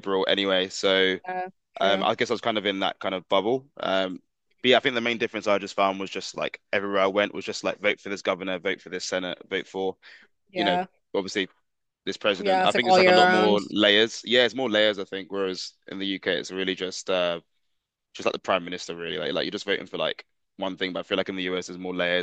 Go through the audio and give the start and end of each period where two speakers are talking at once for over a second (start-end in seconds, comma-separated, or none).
12.4-13.6